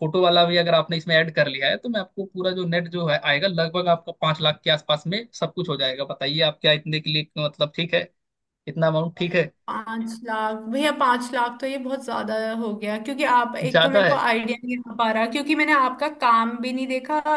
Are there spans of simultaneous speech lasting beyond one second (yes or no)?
no